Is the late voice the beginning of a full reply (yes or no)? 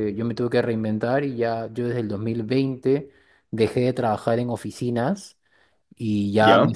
no